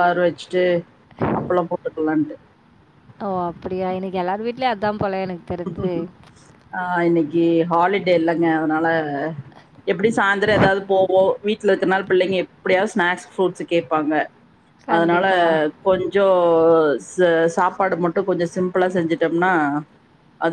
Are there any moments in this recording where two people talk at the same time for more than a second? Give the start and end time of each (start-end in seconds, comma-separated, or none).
none